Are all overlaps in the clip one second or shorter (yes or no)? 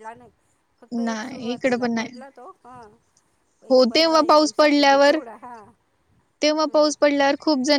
no